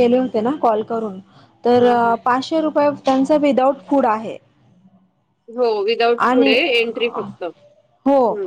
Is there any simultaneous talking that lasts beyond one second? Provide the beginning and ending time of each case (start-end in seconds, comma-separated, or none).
none